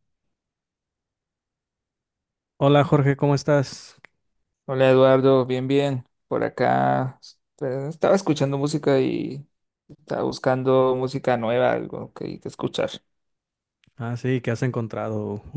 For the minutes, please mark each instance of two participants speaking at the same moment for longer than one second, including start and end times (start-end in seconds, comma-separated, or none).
none